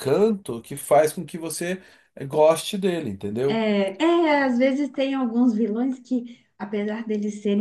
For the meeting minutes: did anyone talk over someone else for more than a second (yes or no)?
no